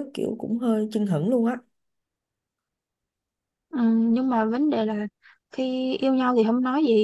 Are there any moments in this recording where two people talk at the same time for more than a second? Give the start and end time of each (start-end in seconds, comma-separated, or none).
none